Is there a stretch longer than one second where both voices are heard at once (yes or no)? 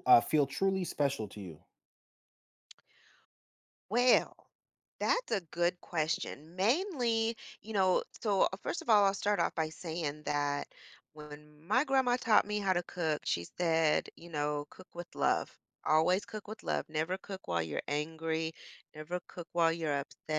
no